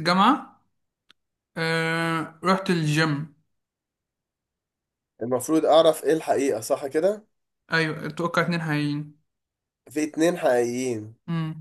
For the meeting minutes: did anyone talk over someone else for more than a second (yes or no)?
no